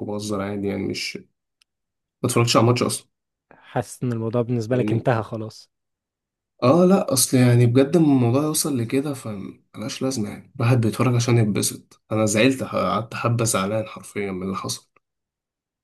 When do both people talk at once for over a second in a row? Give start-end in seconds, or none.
none